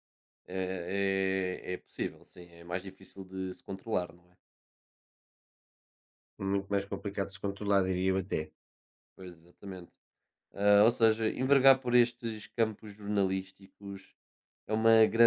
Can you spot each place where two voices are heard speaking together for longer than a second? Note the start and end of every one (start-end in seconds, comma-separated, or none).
none